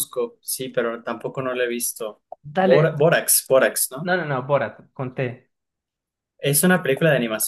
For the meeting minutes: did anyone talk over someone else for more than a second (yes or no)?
no